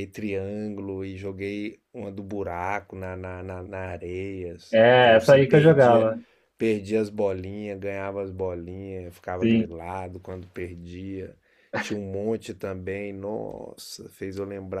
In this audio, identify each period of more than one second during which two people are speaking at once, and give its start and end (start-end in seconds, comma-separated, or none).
4.7-6.1